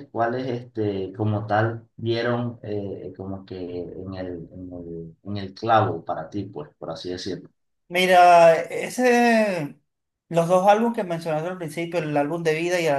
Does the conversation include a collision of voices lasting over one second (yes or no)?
no